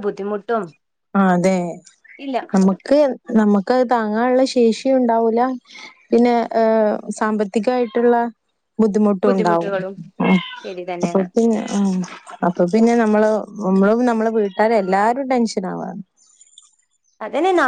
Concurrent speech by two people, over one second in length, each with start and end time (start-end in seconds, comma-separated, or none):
none